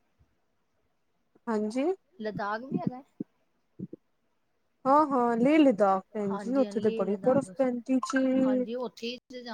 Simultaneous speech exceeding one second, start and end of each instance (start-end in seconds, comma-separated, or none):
6.3-7.7